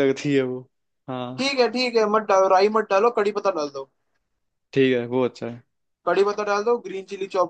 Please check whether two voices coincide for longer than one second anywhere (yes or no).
no